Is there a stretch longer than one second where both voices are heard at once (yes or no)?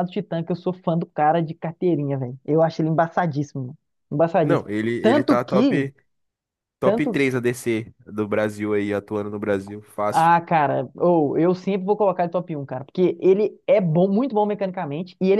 yes